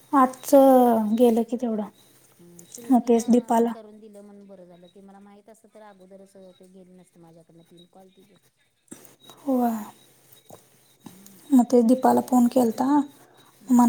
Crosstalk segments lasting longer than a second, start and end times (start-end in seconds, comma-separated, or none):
2.4-3.7